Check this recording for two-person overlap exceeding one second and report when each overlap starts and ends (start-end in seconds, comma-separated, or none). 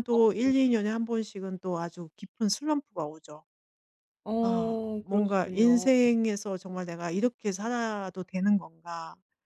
4.4-5.9